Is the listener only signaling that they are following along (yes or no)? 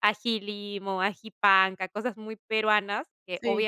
yes